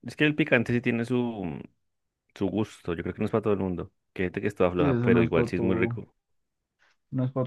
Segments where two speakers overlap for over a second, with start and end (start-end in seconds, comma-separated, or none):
4.8-6.0